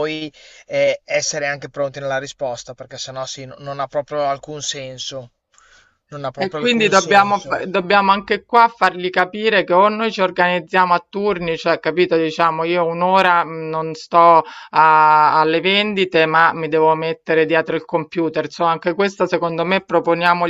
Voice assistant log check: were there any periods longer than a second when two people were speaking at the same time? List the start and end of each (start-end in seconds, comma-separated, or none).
6.3-7.6